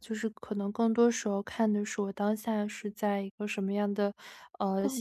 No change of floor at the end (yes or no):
yes